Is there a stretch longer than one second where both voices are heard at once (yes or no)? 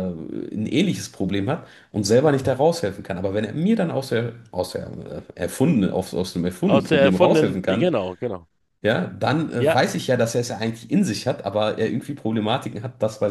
yes